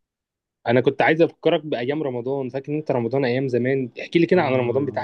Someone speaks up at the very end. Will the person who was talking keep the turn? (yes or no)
no